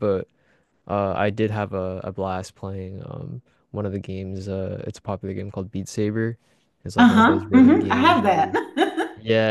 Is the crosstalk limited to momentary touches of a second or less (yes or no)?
no